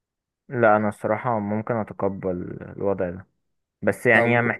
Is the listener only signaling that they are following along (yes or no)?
yes